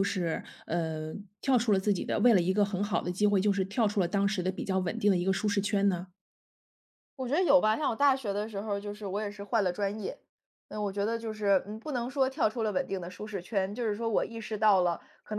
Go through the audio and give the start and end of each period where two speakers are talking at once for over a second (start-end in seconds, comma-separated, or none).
none